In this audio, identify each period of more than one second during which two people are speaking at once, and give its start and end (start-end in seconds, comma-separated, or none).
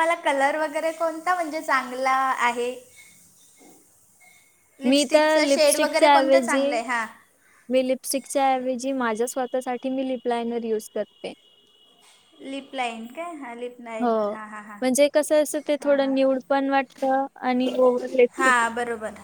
4.9-6.8